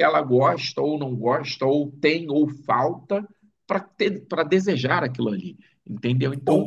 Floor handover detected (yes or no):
yes